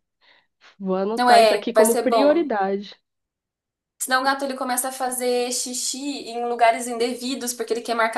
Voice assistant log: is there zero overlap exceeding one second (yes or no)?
no